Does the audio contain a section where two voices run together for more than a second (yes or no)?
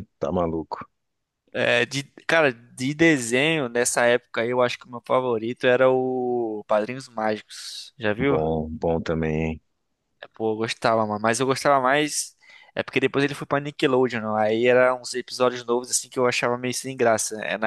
no